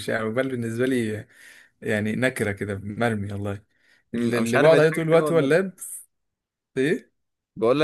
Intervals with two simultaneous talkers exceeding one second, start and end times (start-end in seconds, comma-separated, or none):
4.2-5.5